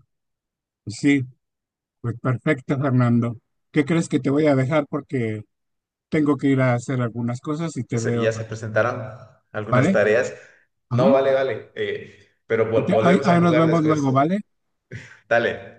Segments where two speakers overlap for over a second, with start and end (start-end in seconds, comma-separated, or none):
12.8-14.2